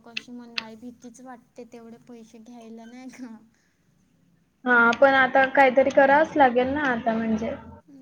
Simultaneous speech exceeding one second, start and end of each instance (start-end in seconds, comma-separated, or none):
none